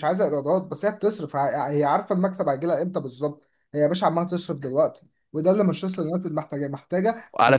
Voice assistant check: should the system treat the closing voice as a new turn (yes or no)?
yes